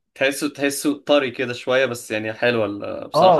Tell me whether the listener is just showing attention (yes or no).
no